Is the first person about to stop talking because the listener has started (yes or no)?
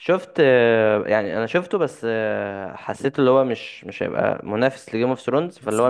no